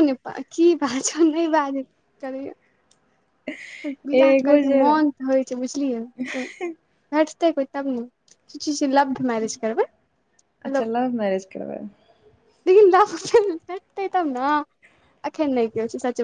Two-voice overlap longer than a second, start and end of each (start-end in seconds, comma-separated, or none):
none